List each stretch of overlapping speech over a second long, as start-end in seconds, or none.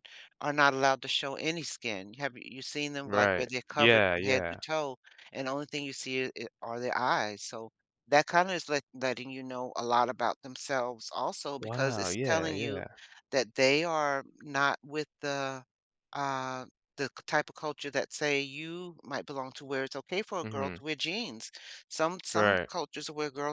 3.0-4.6, 11.6-12.8